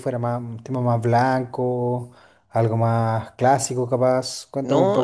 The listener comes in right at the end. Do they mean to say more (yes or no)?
yes